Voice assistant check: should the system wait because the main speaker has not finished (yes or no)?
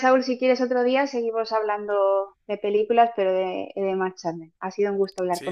no